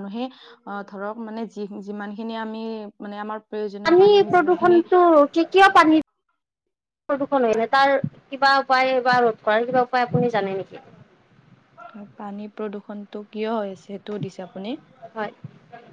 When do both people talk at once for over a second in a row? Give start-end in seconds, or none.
none